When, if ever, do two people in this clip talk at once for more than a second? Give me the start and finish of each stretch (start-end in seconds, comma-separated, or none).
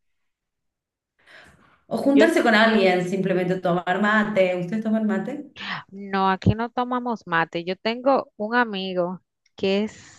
none